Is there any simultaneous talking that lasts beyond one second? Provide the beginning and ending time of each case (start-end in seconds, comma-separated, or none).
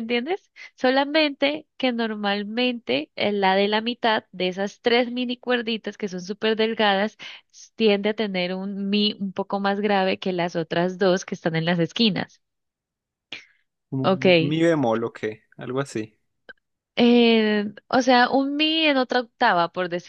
none